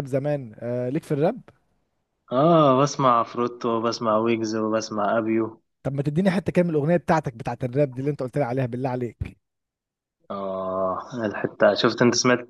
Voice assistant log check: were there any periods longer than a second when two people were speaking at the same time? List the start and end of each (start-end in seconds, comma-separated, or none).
none